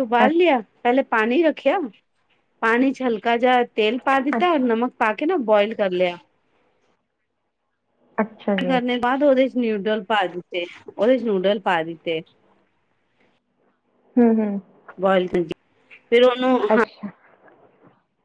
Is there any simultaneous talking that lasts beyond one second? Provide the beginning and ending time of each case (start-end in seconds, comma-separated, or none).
none